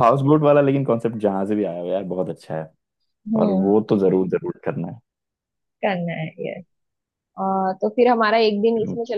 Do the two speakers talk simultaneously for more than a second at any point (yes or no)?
no